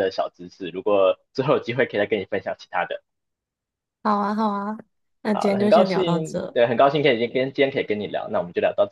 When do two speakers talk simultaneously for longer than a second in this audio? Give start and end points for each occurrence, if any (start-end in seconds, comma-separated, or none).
5.3-6.6